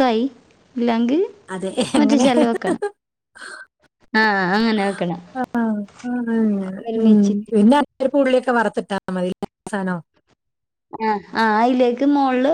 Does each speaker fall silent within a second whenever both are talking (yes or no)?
yes